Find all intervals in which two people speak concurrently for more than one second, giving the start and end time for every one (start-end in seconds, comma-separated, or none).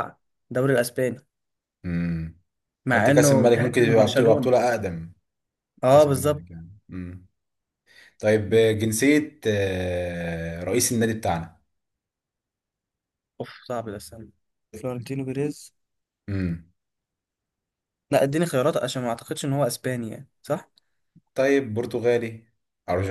2.9-4.5